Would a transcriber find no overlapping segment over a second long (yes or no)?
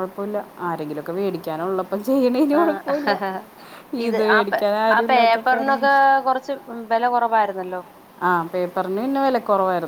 yes